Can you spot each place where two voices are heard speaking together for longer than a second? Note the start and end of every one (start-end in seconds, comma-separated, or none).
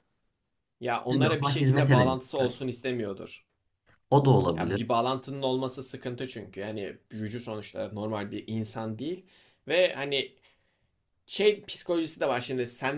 1.1-2.6